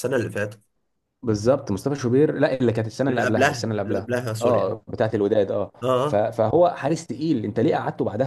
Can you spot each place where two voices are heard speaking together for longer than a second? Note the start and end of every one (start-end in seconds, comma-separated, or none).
3.1-4.8